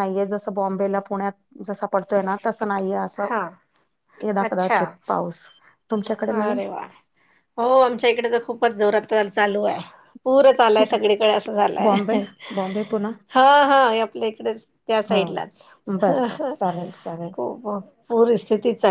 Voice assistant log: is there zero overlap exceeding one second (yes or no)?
yes